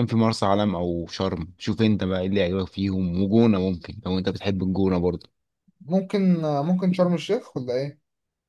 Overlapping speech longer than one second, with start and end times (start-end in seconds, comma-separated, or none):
none